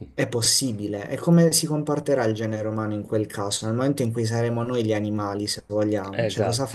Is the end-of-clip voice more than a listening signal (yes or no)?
yes